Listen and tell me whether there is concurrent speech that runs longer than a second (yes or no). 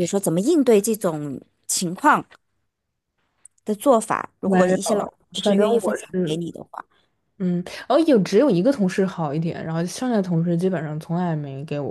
yes